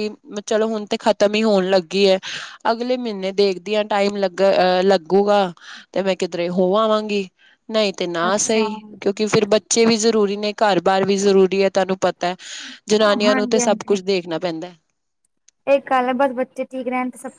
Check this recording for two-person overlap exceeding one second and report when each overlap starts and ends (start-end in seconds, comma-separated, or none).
none